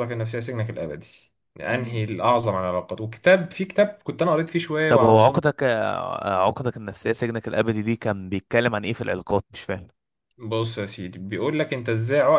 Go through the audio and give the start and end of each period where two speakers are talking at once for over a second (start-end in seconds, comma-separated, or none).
none